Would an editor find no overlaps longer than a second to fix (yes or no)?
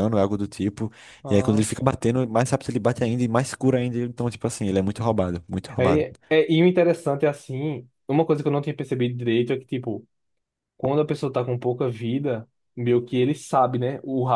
yes